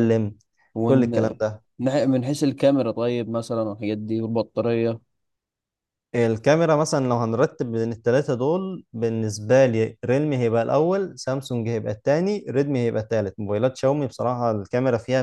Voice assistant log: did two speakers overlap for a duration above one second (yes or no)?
no